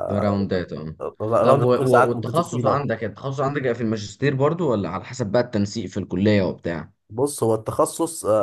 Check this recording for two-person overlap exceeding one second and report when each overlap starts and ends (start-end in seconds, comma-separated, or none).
1.4-2.9